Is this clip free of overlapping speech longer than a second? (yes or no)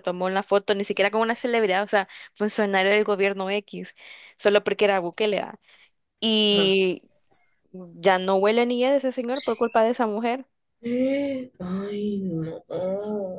yes